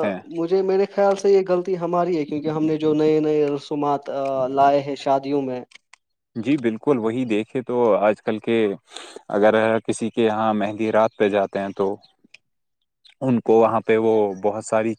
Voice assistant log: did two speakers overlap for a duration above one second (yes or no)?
no